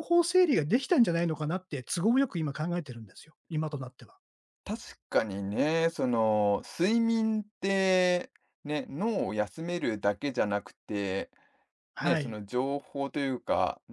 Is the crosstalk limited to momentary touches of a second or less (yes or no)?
yes